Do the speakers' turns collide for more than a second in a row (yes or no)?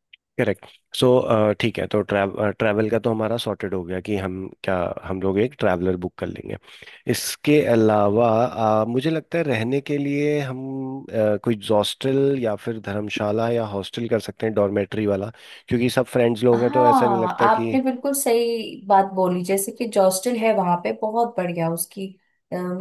yes